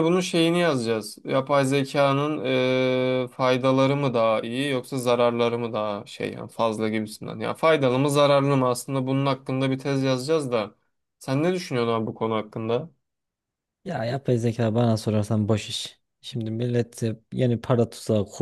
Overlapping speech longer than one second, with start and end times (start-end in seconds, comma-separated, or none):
none